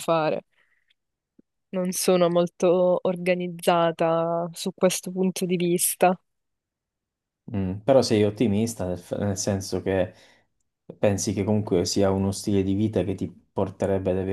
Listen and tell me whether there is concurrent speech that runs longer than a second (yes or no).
no